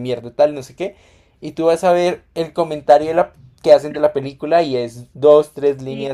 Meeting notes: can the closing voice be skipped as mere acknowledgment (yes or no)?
yes